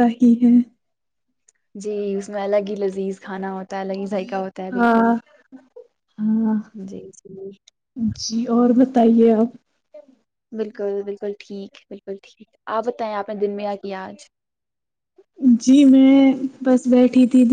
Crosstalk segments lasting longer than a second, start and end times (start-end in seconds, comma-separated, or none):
none